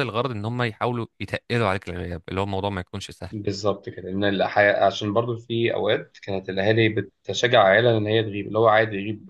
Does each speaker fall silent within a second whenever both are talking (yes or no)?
yes